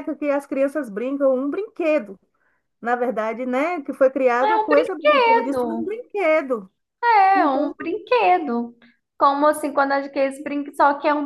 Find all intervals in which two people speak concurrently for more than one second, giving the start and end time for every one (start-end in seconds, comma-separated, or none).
4.4-5.9